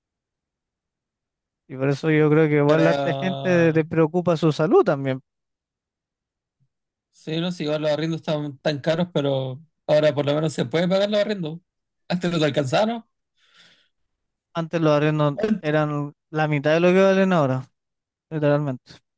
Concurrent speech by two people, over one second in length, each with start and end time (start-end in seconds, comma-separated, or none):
2.6-3.9